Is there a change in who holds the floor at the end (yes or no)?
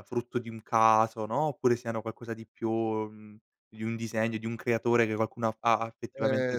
yes